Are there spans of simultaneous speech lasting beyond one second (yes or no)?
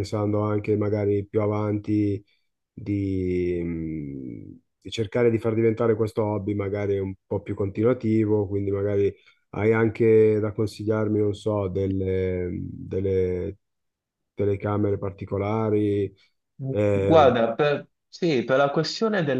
no